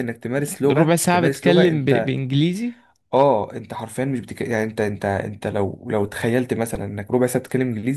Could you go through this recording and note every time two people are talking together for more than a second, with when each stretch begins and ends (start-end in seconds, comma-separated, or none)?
0.7-2.1